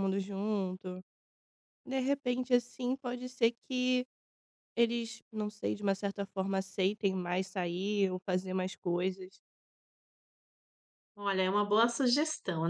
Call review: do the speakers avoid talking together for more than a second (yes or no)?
yes